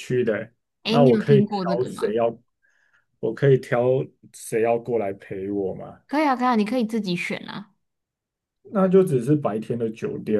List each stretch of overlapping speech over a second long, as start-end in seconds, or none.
0.8-2.2